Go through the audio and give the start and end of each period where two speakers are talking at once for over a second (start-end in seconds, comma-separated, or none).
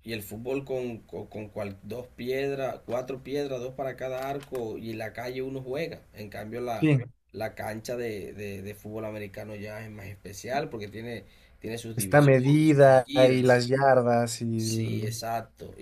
12.0-13.7